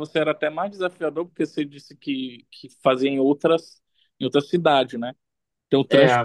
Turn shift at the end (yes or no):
no